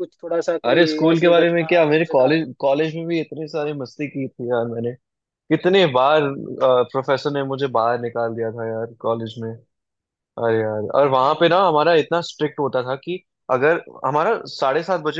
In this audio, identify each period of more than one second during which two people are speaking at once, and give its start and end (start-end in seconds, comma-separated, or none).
0.6-2.5